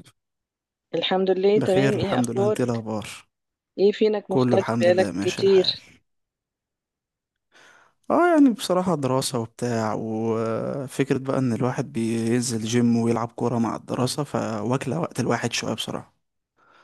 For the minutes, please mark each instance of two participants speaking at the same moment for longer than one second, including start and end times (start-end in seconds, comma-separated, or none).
1.6-2.9, 4.3-5.8